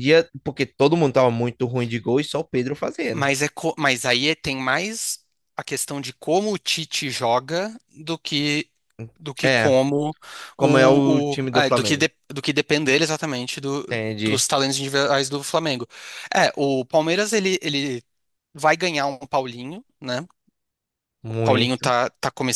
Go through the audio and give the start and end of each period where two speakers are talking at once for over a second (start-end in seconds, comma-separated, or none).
10.6-12.1